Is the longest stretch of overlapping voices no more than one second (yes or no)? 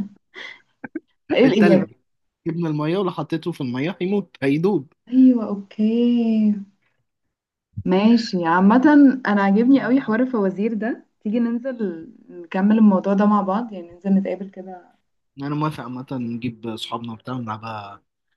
yes